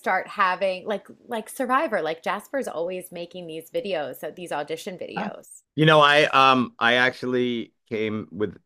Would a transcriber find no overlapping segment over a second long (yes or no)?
yes